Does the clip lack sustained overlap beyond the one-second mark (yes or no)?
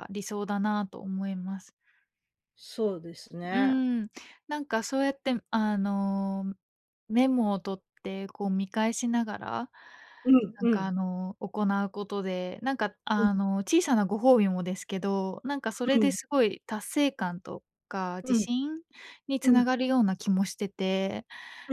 yes